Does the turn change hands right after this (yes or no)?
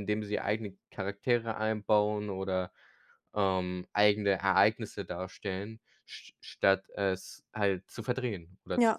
yes